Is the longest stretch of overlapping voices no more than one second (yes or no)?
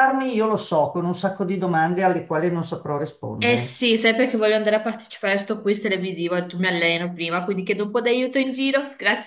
yes